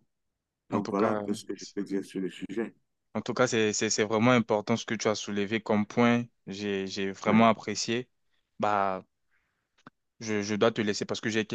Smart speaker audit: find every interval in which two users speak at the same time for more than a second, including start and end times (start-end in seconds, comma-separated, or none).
none